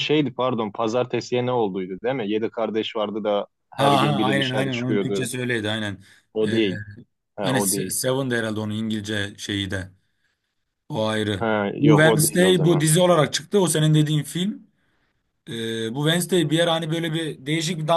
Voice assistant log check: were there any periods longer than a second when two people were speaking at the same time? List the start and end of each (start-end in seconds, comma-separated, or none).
3.8-5.3, 11.4-12.8